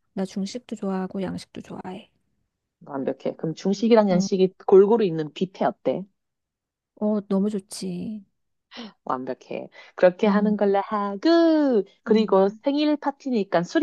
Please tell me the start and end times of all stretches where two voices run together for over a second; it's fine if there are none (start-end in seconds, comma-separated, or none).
none